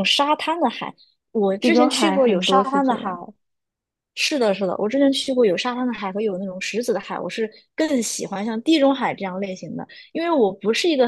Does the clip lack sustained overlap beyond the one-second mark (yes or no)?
no